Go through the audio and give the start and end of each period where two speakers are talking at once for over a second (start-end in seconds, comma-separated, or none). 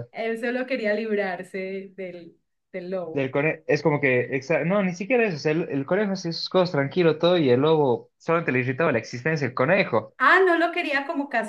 none